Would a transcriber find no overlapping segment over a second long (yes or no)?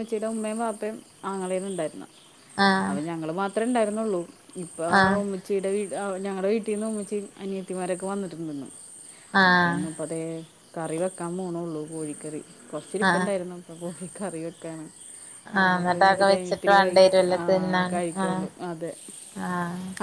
no